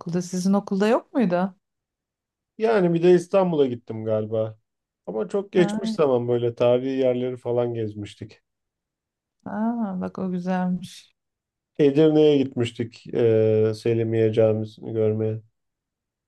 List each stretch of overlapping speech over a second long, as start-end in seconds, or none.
none